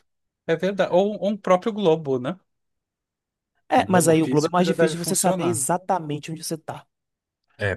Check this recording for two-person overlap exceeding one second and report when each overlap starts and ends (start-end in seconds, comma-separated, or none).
3.8-5.6